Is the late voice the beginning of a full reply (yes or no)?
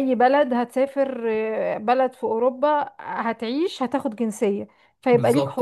yes